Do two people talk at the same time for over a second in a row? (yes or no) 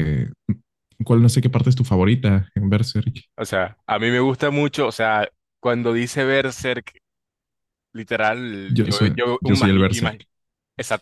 yes